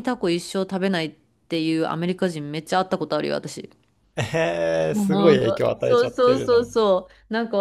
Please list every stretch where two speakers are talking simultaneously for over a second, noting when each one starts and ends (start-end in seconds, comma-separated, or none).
4.9-6.8